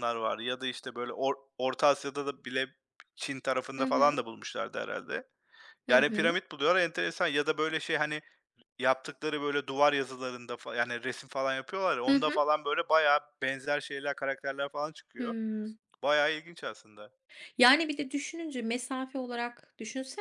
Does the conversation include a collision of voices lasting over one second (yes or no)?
no